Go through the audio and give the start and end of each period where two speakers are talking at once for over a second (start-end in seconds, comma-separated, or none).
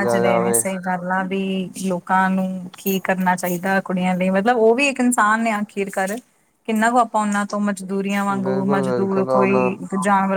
8.3-9.7